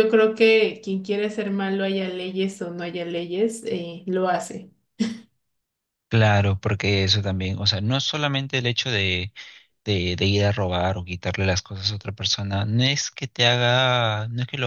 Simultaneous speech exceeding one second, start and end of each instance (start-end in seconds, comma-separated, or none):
none